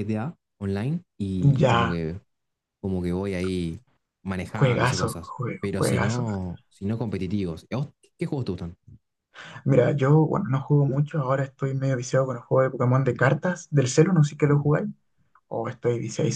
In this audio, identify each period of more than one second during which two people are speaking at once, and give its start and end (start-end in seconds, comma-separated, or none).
4.5-6.2